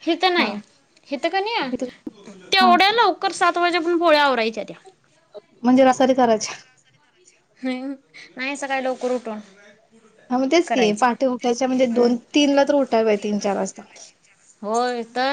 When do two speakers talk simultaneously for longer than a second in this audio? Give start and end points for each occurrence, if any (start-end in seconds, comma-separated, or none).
none